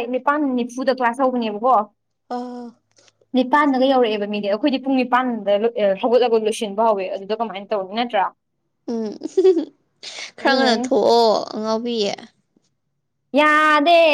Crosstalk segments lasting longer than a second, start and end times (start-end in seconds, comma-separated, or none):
none